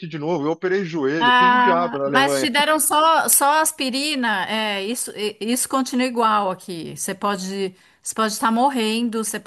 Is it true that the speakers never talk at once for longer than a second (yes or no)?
no